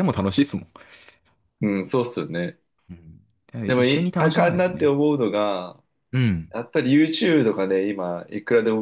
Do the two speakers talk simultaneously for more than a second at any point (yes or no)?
yes